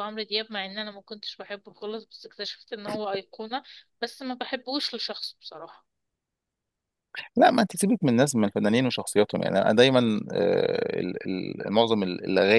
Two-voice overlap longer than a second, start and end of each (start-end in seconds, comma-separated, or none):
none